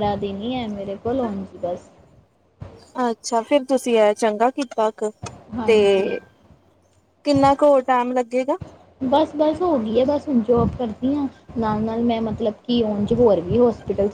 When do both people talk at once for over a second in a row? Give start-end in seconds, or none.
none